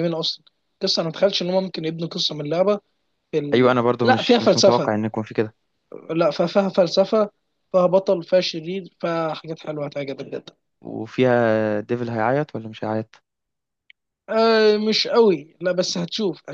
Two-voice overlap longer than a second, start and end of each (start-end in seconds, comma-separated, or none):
3.5-4.9